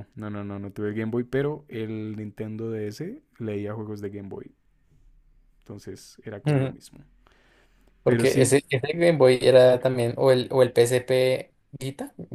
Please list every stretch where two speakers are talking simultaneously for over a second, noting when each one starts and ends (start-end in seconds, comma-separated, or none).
none